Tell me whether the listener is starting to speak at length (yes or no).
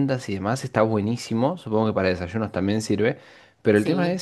no